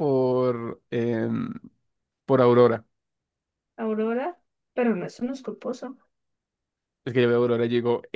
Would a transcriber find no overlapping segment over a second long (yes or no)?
yes